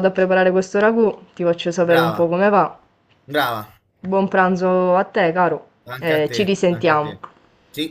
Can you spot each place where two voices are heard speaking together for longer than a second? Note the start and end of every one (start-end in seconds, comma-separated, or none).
6.0-7.2